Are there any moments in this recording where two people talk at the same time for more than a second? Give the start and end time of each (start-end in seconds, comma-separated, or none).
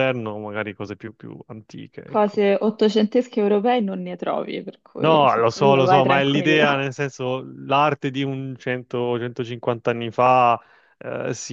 5.0-6.8